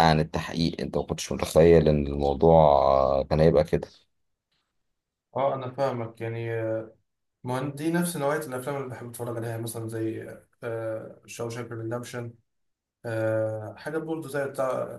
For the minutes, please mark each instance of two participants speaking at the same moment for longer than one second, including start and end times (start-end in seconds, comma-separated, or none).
none